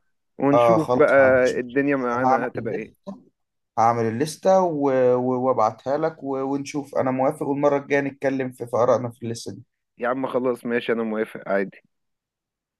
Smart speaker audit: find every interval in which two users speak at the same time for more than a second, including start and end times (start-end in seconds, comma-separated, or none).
0.5-2.9